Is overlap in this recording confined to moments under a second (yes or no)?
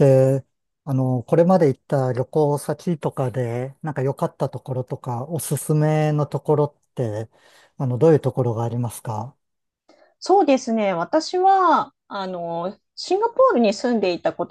yes